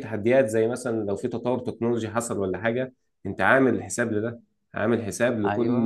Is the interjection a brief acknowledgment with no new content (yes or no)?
yes